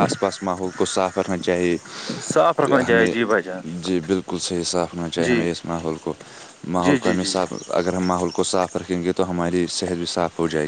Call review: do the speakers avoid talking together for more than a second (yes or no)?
yes